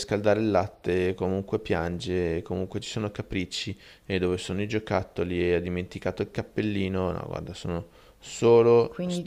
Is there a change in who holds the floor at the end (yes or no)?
yes